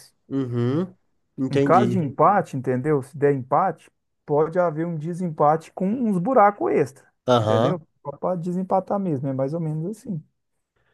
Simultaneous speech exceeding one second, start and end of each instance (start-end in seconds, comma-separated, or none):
none